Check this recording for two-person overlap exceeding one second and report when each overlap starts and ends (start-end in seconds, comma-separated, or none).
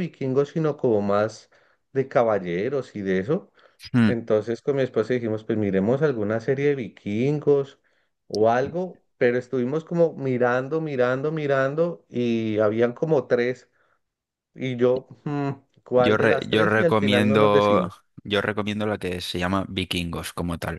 15.9-18.0